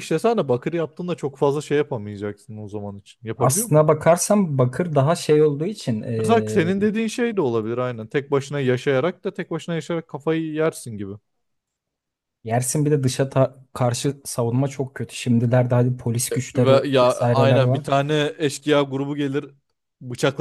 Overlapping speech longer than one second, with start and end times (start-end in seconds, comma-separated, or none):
16.6-17.9